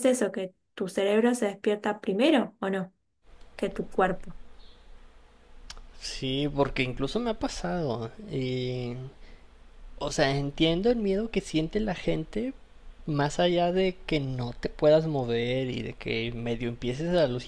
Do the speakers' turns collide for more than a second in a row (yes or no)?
no